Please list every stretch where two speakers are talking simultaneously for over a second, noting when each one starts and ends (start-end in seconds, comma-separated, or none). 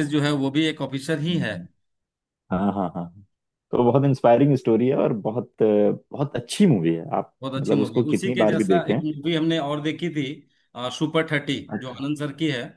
7.4-9.0